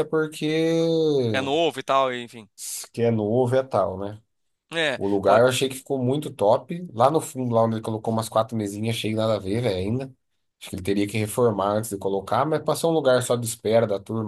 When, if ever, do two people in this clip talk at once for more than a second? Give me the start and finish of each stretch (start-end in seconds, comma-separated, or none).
none